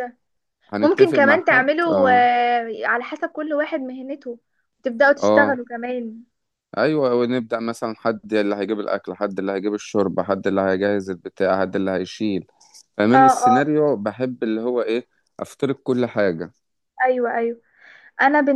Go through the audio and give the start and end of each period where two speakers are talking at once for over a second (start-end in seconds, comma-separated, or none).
0.8-2.3